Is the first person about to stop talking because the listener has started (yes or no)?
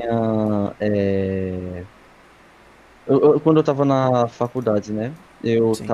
no